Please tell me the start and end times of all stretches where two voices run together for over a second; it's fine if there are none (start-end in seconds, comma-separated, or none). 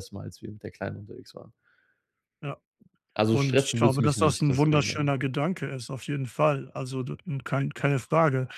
3.3-5.1